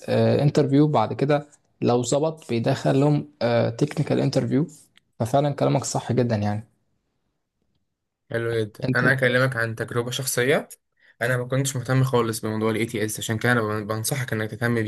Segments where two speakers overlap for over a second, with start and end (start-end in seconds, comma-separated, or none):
none